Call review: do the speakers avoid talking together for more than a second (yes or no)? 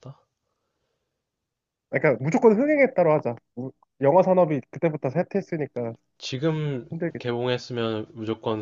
yes